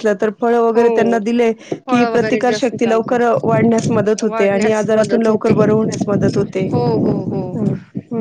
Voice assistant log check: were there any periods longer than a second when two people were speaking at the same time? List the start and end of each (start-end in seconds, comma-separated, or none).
1.9-3.3, 4.3-5.5